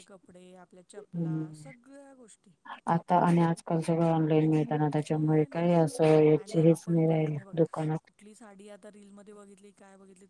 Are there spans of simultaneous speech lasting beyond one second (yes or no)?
yes